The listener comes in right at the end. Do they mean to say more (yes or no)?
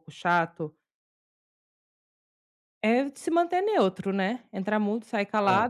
no